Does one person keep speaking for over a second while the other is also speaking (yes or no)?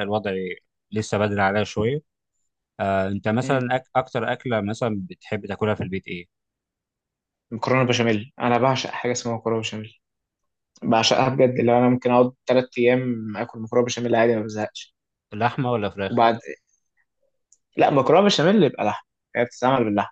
no